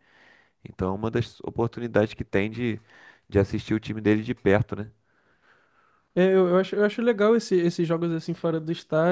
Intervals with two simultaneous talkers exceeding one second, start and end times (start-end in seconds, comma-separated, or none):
none